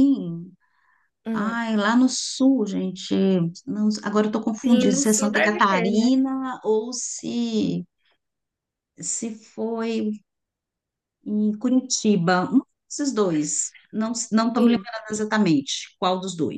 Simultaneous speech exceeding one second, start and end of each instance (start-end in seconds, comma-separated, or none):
4.6-6.1